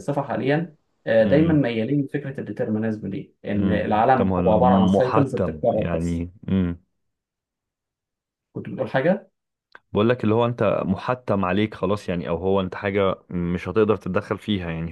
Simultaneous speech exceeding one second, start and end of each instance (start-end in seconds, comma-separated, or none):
3.6-6.3